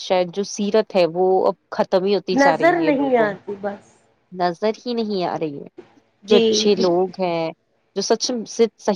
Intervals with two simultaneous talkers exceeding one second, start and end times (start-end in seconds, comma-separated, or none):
2.4-3.9